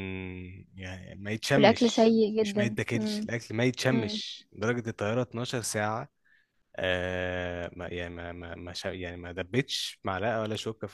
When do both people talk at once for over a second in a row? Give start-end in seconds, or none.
1.6-3.3